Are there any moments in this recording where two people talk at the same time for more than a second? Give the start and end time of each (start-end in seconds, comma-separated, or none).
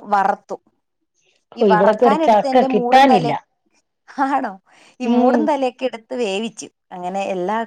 1.6-3.3